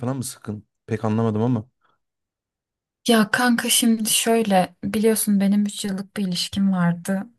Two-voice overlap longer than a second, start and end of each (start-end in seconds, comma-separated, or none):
none